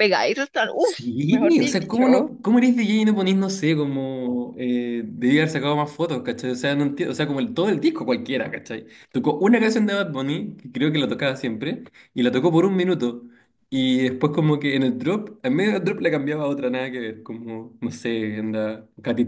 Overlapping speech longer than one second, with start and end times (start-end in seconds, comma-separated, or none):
0.8-2.3